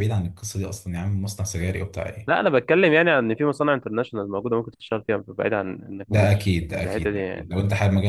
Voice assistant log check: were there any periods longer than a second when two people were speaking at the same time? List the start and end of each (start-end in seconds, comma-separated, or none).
6.1-7.5